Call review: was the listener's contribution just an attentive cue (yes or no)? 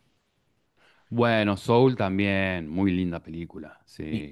no